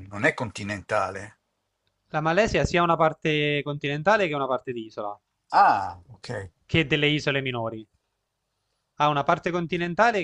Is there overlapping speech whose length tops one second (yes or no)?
no